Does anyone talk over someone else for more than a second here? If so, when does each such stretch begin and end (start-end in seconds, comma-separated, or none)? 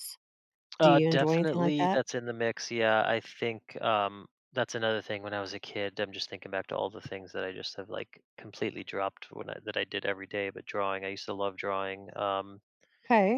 0.8-2.0